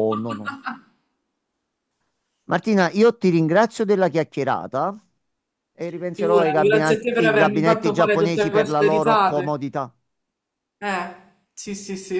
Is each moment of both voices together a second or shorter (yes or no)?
no